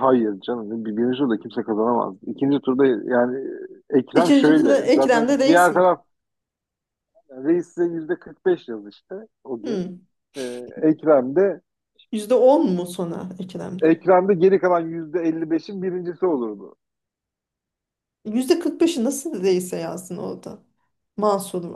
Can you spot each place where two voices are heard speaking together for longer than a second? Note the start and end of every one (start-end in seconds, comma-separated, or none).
4.1-5.8